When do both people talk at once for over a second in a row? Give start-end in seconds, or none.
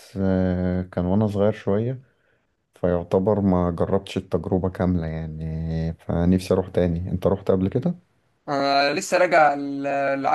none